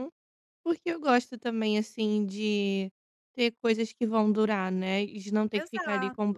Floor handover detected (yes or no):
no